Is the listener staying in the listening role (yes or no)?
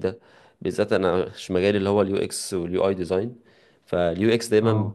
yes